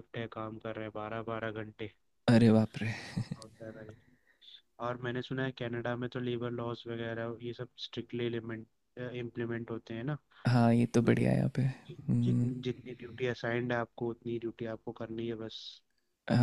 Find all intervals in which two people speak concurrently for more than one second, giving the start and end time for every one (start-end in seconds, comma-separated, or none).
11.0-12.5